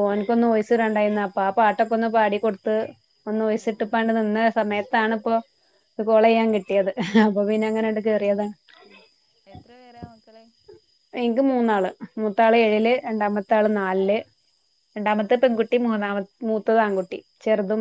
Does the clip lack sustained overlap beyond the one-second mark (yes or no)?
yes